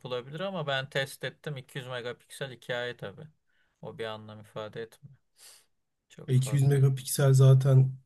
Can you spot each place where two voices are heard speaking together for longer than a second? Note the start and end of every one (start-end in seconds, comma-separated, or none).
none